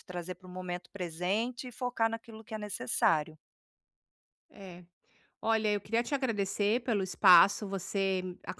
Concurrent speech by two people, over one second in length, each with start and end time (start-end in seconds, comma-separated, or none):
none